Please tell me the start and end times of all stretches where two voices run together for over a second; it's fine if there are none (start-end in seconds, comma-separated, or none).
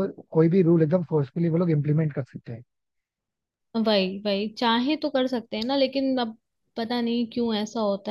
none